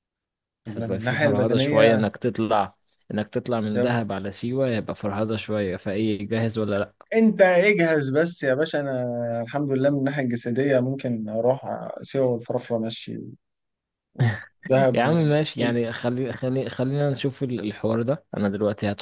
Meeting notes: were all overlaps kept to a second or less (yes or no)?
no